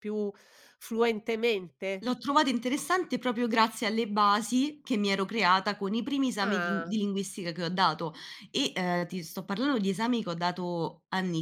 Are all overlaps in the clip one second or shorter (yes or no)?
yes